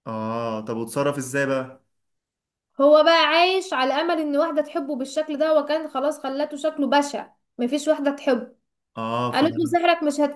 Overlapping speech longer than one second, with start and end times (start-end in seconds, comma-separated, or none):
none